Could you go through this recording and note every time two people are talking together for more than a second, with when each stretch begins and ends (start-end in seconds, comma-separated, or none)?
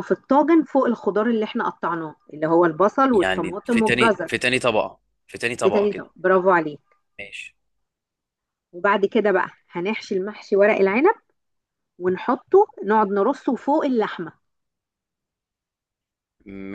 3.1-4.4